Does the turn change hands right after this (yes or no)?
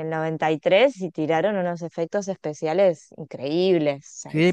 yes